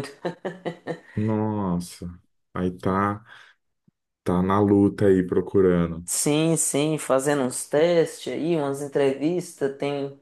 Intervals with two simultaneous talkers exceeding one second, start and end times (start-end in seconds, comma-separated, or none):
none